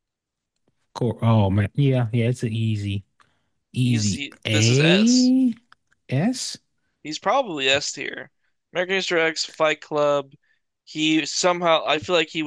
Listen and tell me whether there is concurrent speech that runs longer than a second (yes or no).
yes